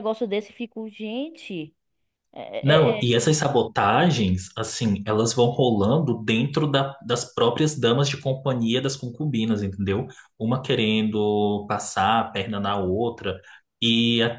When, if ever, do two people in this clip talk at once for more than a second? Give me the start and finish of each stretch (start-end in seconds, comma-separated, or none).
none